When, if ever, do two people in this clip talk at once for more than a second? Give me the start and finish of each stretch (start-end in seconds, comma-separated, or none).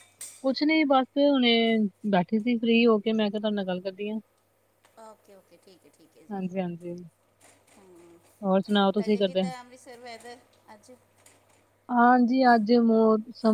none